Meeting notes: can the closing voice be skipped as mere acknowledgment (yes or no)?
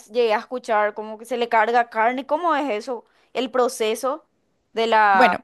no